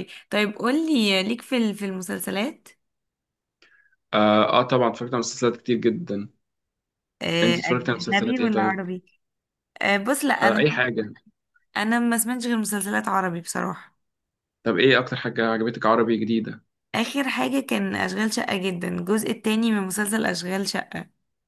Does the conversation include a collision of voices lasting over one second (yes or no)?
yes